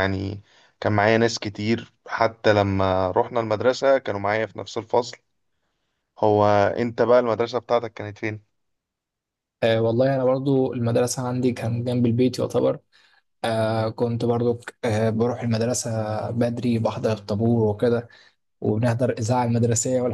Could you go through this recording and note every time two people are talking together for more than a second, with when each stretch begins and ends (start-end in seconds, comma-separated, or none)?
none